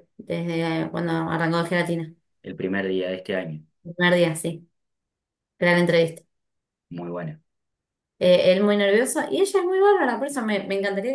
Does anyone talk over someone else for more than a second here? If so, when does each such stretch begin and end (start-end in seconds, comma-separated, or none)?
none